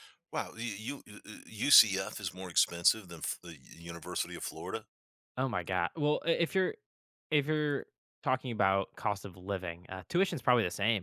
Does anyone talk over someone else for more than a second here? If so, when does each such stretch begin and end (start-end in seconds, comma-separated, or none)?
none